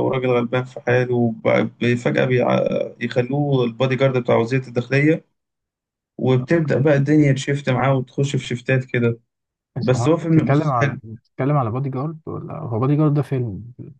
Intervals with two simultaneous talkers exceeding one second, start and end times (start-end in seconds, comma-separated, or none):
9.8-11.0